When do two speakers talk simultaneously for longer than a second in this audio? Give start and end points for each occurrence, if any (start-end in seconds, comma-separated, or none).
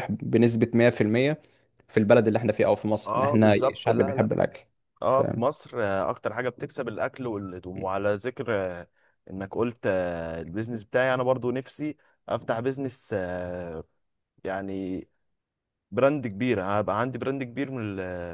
3.0-4.3